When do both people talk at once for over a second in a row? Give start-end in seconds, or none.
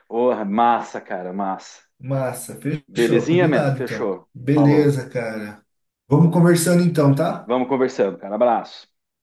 3.0-5.0